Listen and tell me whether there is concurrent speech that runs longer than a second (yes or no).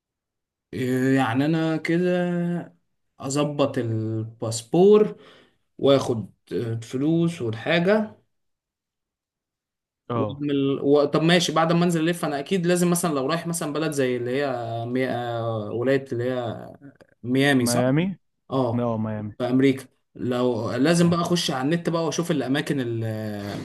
no